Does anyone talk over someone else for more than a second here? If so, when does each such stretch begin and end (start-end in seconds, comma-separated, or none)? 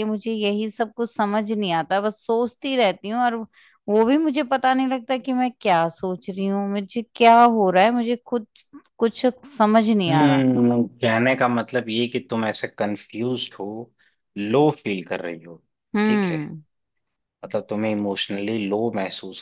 none